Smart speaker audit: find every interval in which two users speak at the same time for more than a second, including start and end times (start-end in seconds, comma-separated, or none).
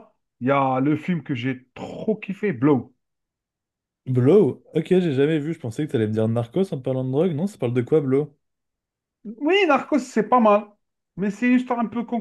none